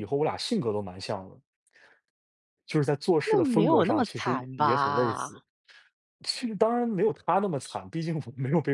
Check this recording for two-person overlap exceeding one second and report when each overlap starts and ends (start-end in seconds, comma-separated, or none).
3.2-5.3